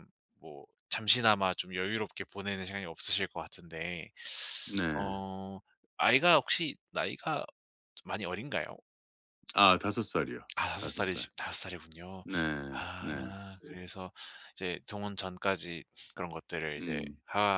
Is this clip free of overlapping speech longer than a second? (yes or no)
yes